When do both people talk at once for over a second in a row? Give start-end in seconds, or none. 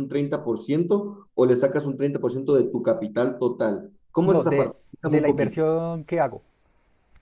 4.2-5.6